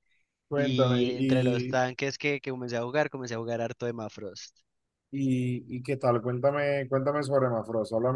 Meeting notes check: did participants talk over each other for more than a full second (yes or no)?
yes